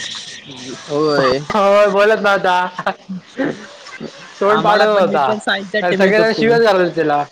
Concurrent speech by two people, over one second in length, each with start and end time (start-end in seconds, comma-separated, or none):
4.5-6.5